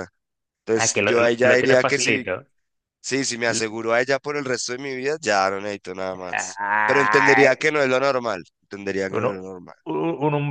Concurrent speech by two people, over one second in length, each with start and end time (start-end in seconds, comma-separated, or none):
0.7-2.2, 6.1-7.5